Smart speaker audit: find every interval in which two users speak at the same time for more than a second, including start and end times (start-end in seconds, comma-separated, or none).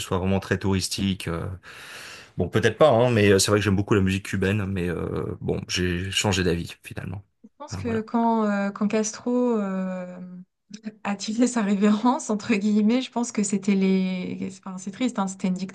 none